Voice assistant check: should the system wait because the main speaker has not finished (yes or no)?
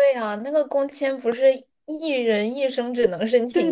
no